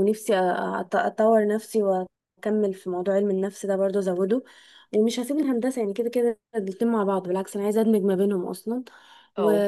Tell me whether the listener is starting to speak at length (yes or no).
no